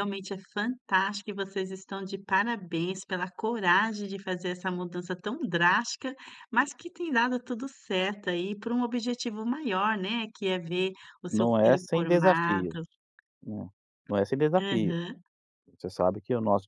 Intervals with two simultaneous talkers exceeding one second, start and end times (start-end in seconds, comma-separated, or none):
11.3-12.8